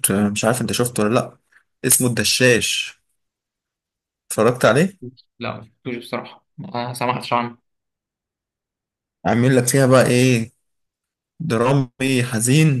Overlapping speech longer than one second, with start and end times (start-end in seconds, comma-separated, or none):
none